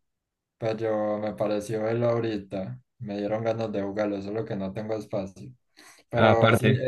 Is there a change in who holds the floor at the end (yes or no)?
no